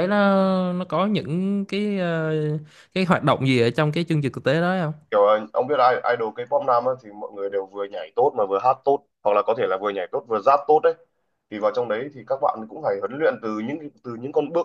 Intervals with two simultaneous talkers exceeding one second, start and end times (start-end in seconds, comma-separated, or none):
none